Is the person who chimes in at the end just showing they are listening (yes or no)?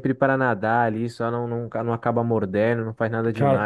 yes